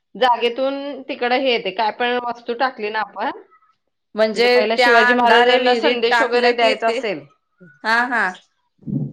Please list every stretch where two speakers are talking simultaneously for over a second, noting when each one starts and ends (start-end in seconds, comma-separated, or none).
4.5-7.0